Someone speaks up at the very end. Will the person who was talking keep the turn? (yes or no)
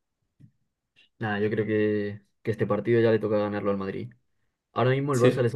yes